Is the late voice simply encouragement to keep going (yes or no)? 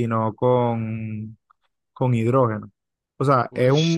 yes